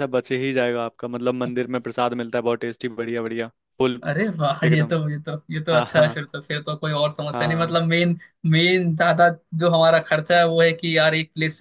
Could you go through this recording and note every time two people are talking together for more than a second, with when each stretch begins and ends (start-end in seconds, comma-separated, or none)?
none